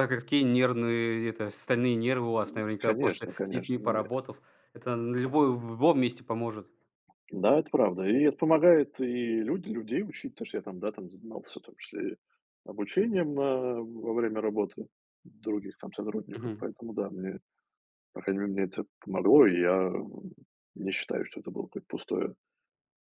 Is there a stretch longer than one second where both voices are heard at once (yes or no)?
yes